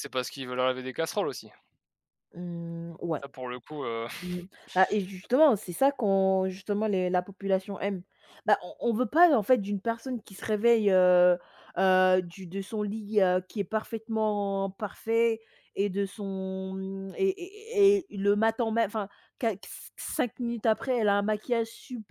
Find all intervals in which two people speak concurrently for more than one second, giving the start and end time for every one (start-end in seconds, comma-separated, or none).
none